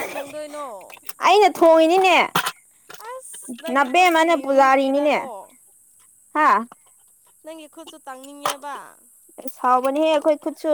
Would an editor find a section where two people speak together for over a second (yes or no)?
yes